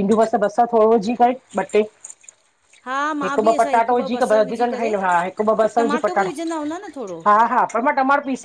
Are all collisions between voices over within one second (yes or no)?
no